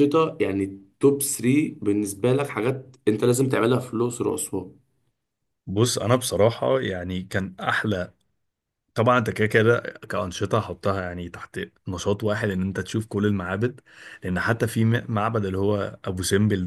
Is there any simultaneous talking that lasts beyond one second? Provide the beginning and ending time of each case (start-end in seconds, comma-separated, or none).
none